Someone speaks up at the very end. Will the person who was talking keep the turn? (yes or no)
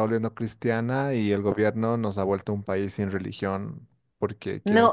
no